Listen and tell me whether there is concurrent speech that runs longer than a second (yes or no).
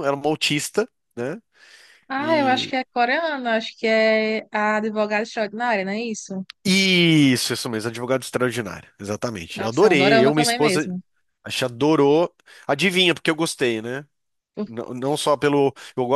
yes